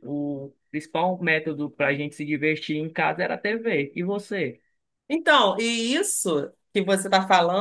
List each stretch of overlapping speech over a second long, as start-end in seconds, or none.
none